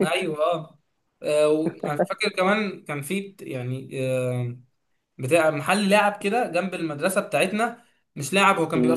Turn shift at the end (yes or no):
no